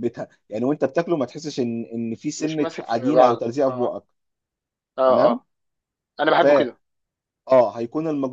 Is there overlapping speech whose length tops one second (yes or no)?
yes